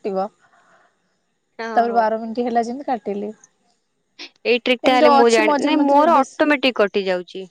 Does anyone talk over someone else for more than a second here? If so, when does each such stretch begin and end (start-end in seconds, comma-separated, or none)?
4.9-6.5